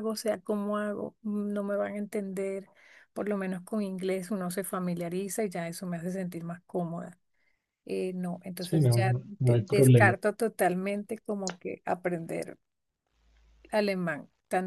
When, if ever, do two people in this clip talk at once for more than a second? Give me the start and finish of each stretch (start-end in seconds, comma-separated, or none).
8.6-10.2